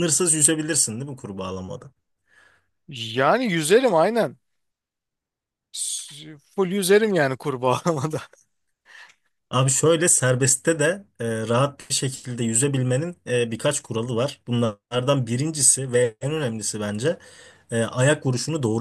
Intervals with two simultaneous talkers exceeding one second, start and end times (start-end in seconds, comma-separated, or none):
none